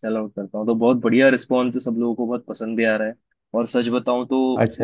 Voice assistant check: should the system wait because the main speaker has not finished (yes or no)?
yes